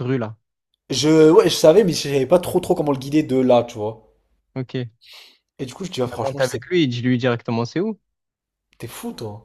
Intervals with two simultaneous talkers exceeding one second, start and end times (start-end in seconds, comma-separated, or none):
none